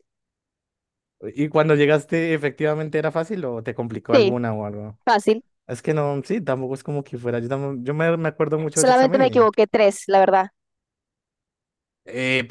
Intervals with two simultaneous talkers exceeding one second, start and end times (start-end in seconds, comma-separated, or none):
none